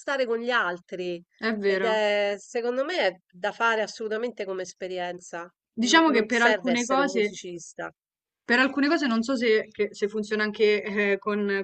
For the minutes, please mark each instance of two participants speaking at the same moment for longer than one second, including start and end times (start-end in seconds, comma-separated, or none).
5.8-7.4